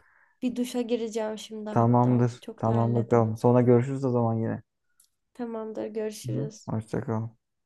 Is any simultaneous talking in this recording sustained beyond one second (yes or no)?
yes